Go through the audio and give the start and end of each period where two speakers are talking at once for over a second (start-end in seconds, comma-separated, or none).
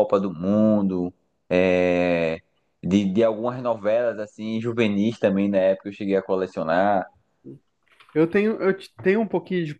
none